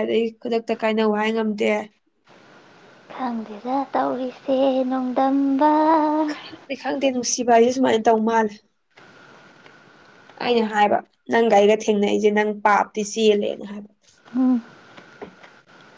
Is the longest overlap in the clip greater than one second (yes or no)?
no